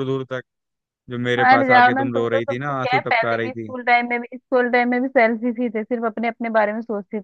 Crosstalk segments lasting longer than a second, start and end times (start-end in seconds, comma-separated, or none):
1.4-3.7